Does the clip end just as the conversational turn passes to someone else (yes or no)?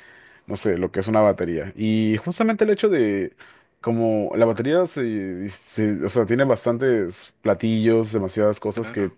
no